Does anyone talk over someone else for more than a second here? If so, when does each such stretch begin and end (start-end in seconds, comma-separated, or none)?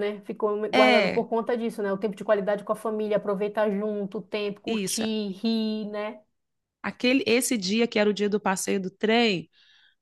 none